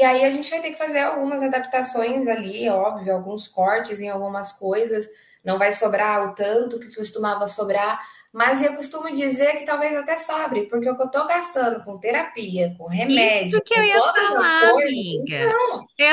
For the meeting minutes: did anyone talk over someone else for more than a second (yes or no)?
yes